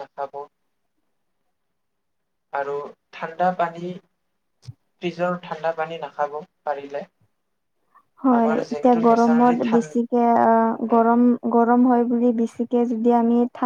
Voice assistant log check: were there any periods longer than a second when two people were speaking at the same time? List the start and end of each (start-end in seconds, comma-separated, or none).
8.4-10.0